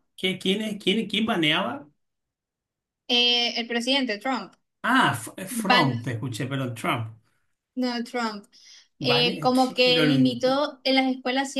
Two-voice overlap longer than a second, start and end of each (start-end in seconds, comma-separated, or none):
9.0-10.4